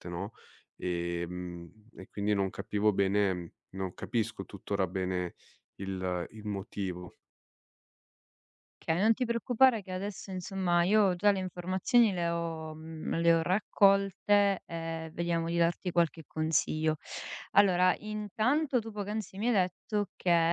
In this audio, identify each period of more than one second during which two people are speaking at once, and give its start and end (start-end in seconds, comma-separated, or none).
none